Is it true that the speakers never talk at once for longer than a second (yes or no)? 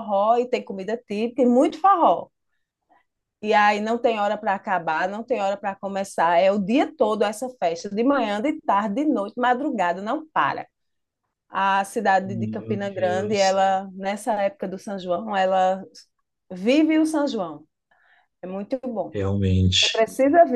no